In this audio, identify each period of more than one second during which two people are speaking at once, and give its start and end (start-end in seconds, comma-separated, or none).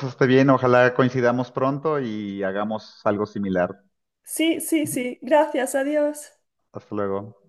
none